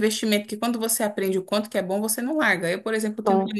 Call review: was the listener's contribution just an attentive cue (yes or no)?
yes